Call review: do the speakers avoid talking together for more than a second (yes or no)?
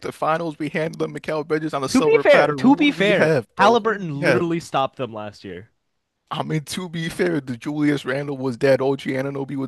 no